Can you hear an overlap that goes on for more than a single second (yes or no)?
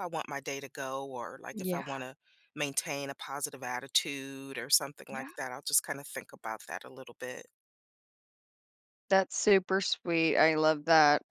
no